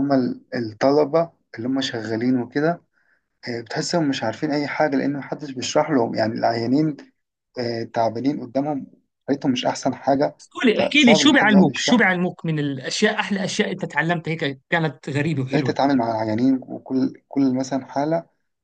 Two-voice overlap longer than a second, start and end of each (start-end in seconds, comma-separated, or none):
10.8-12.2